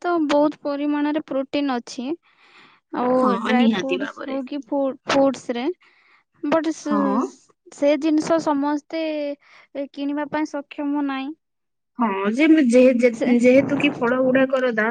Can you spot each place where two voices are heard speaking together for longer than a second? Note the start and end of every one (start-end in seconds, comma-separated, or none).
none